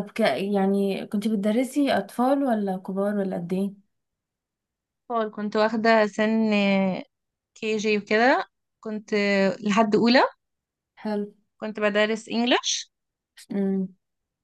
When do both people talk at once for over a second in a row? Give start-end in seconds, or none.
none